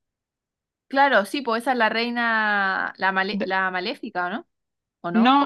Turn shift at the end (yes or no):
yes